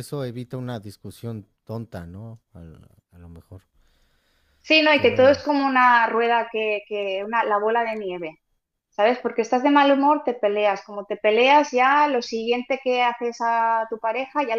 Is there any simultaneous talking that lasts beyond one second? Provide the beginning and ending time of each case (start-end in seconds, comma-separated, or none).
none